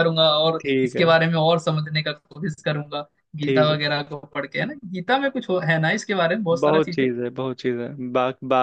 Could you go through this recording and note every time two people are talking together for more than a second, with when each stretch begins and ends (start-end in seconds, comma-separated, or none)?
none